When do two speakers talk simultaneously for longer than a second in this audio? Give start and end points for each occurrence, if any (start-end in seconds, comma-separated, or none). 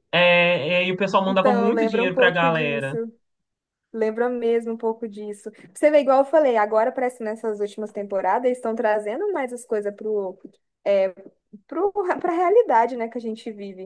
1.3-3.0